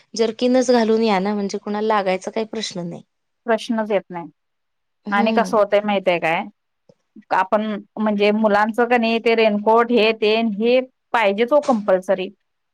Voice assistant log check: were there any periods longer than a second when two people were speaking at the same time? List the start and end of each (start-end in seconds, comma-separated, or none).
none